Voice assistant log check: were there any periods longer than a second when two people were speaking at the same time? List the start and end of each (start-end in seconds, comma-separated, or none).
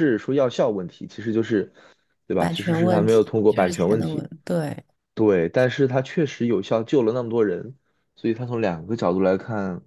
2.4-4.2